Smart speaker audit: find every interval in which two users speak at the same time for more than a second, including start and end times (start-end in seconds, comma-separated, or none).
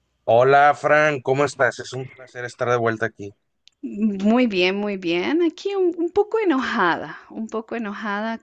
none